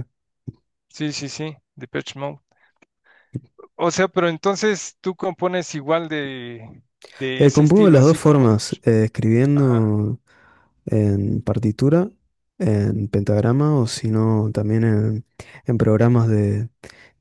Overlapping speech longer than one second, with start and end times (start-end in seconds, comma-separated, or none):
7.4-8.8